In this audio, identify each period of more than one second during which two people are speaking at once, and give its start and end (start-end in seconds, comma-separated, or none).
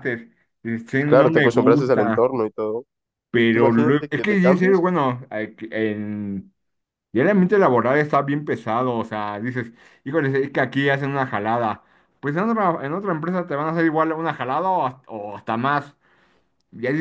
1.0-2.3, 3.3-4.8